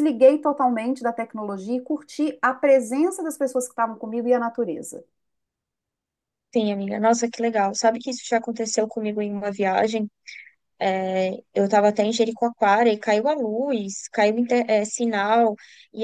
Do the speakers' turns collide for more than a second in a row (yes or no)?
no